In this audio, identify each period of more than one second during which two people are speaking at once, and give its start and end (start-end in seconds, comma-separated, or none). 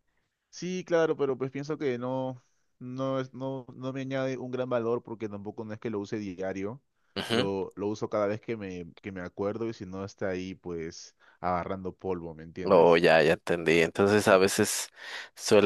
none